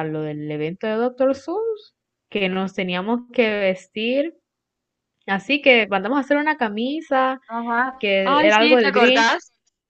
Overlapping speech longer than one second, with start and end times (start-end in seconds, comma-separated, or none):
8.0-9.4